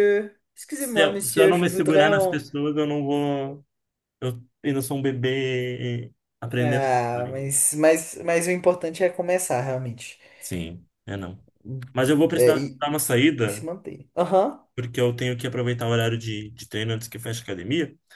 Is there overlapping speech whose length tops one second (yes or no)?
yes